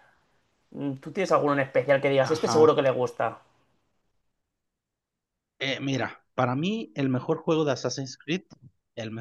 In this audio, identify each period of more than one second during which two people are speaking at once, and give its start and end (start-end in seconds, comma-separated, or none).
none